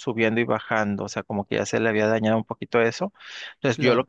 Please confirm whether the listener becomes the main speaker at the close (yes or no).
no